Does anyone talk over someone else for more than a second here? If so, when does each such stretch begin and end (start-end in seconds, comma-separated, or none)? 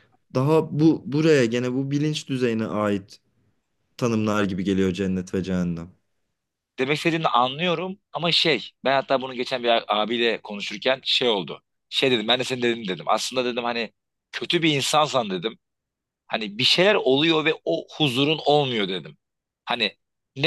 none